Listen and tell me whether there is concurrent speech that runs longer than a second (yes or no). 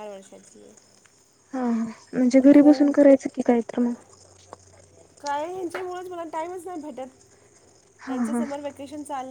no